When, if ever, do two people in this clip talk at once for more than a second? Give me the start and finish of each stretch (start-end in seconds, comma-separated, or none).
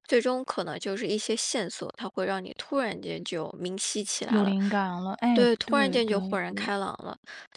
5.3-6.7